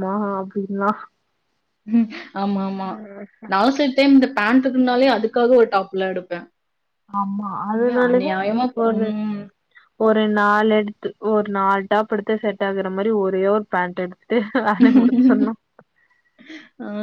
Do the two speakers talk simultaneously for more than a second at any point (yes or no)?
no